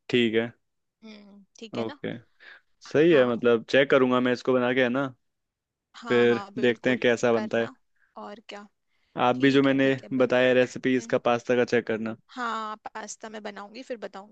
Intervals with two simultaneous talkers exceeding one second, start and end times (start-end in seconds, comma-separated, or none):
6.1-7.7, 9.3-11.2